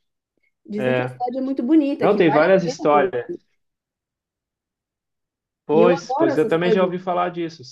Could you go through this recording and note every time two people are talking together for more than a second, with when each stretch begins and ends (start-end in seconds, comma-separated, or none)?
2.0-3.3, 5.7-7.0